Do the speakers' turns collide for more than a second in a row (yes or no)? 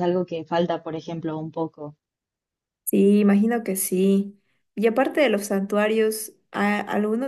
no